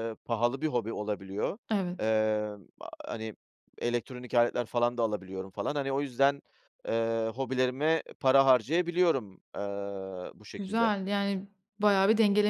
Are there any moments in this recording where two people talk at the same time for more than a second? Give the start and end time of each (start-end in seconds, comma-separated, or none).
none